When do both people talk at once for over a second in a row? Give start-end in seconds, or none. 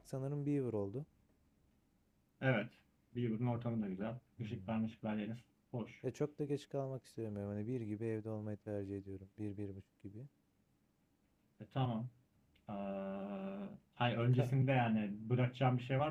none